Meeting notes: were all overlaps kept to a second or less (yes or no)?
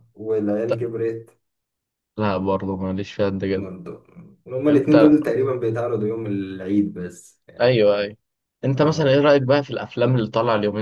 yes